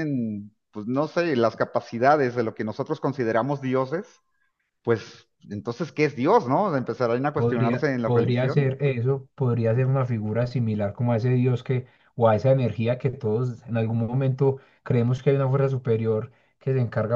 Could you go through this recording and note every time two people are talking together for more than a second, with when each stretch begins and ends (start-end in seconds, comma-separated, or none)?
7.3-8.7